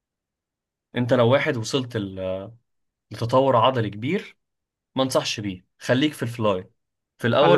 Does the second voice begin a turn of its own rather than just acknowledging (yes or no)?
yes